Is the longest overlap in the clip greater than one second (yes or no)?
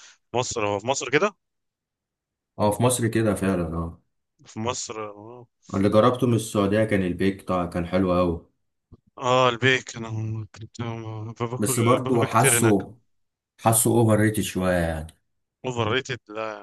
yes